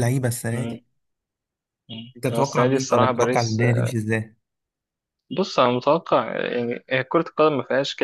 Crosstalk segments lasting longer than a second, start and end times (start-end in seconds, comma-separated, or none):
2.1-3.6